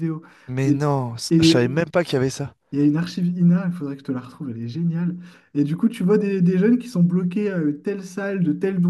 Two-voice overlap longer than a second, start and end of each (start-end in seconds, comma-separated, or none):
none